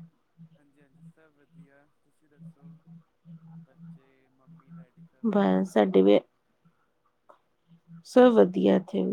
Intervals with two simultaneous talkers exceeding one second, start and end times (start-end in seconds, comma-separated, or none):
none